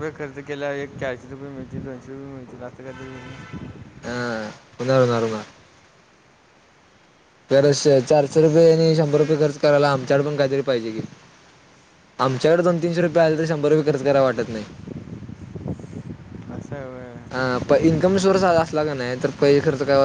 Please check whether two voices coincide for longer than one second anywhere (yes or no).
no